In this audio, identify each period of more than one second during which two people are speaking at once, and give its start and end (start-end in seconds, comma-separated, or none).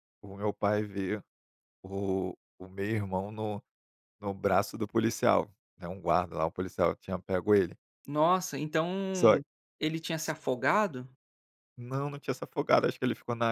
none